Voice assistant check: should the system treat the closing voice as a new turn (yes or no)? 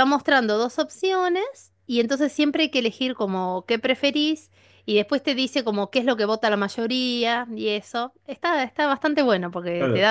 no